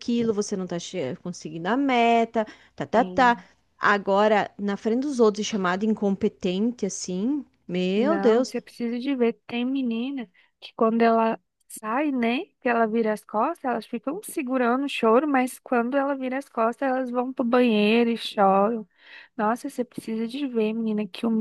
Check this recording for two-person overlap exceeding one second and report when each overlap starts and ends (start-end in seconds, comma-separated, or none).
none